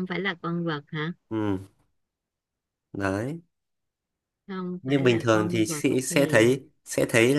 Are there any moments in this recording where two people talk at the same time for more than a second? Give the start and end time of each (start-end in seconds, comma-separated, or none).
4.8-6.4